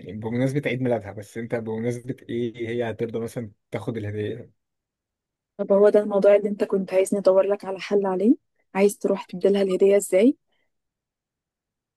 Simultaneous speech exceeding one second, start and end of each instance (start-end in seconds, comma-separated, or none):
none